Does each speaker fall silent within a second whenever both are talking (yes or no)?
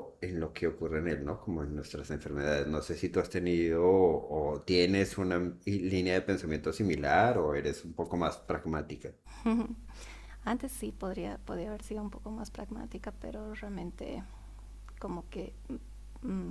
yes